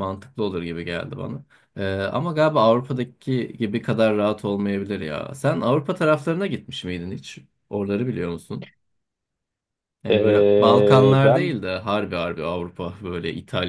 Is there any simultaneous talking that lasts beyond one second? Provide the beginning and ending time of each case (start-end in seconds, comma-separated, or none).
10.1-11.6